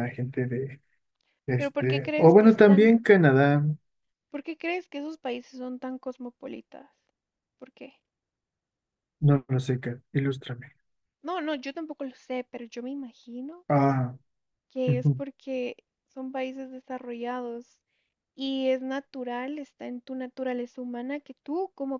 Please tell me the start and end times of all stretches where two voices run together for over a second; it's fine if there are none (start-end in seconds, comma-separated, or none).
1.6-2.9